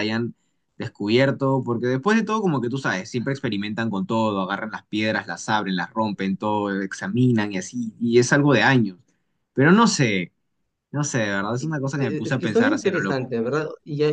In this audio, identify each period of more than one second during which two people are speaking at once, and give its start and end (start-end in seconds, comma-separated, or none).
11.6-13.3